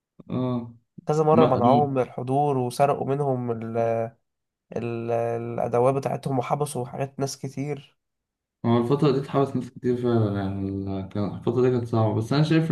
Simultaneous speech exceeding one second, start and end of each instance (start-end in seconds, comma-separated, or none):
none